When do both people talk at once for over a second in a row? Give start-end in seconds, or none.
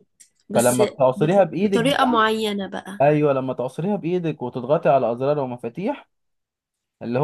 0.5-2.2